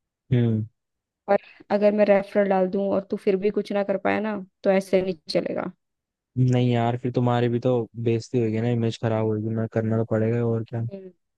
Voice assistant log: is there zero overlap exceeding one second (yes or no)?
yes